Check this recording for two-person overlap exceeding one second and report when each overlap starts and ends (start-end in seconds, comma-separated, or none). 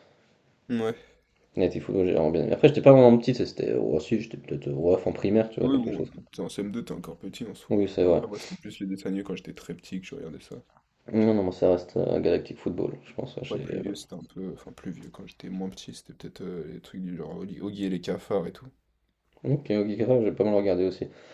none